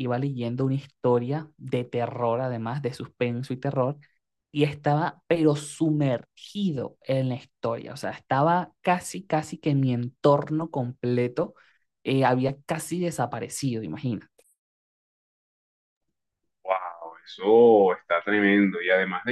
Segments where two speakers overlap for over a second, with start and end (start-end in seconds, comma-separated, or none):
none